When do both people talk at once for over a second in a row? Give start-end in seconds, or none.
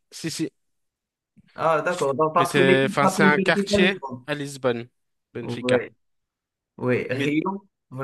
2.4-4.2